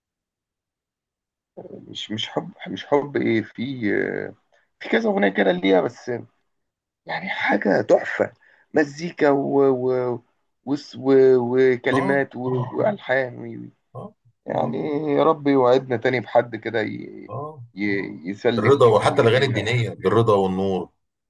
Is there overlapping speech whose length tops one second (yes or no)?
yes